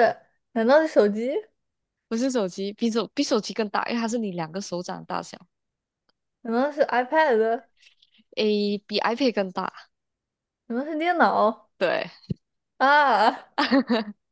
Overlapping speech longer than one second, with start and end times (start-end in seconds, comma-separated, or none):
none